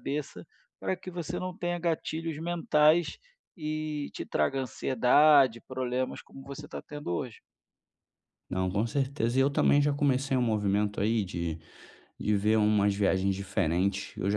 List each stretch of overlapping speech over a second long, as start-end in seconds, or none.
none